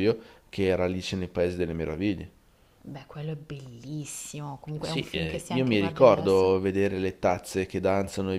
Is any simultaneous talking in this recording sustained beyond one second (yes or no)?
yes